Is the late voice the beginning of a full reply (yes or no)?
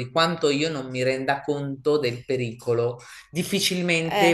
no